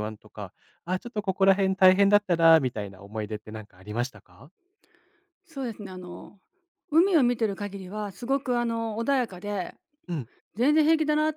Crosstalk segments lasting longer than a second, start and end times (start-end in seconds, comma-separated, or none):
none